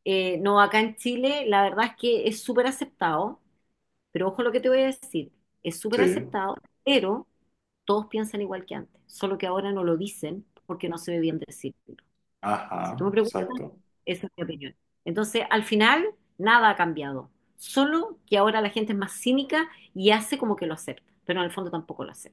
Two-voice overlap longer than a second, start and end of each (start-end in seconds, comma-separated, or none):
none